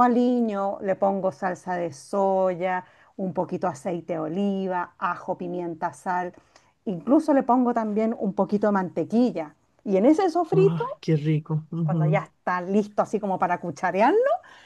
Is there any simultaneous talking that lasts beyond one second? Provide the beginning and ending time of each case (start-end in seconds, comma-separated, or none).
none